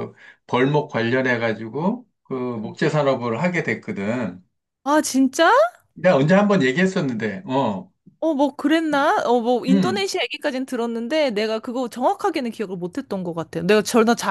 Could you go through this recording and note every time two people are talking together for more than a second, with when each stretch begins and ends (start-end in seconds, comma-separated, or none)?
none